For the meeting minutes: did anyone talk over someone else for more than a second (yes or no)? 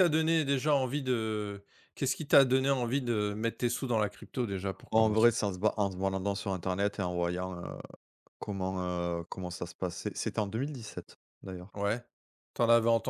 no